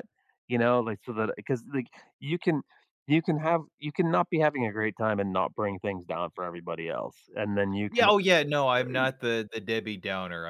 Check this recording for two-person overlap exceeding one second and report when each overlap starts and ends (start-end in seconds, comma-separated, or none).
none